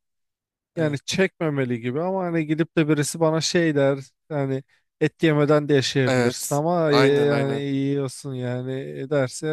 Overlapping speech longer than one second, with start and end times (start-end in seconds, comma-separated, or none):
6.1-7.7